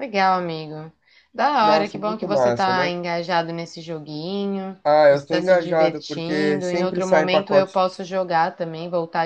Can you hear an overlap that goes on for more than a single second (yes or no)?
yes